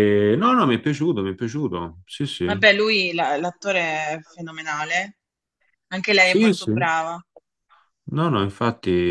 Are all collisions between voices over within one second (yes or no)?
yes